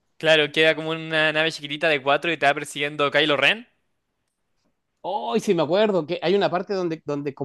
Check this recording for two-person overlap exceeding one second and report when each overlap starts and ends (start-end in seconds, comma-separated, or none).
none